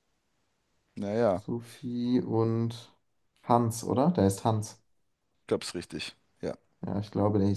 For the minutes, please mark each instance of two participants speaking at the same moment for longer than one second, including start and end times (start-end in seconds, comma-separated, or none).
none